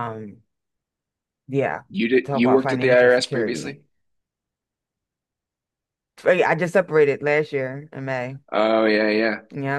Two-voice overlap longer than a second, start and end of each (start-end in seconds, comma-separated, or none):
2.2-3.8